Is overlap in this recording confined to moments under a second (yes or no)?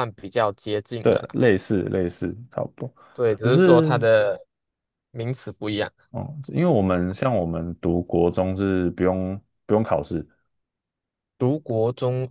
yes